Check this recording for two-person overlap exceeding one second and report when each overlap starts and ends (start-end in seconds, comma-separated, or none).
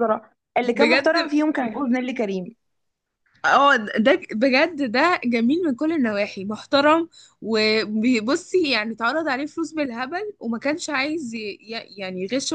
none